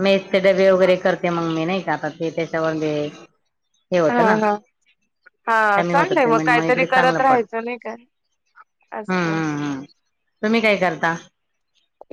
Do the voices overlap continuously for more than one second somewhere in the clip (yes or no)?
yes